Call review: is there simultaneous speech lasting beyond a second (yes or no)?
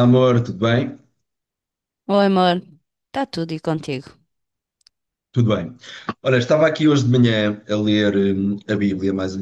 no